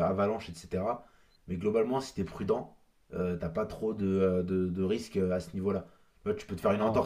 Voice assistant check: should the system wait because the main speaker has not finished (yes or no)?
yes